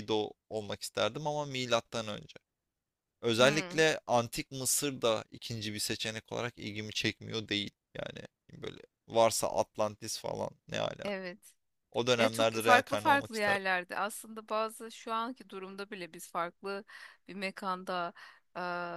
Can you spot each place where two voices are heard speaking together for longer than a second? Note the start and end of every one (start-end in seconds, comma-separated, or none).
12.2-13.6